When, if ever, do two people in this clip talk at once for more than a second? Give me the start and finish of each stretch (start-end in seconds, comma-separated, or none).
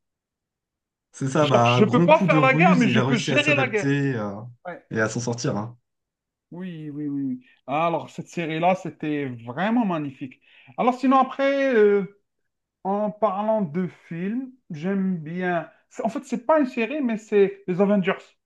1.4-3.9